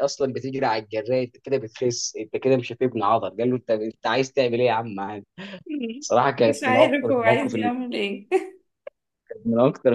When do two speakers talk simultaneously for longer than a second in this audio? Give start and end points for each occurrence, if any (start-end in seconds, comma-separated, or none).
6.5-7.7